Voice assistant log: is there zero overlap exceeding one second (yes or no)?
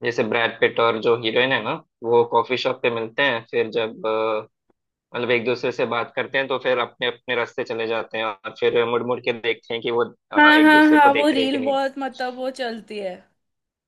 no